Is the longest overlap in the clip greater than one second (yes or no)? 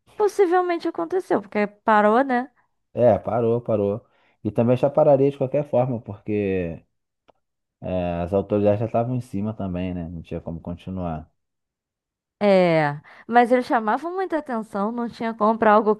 no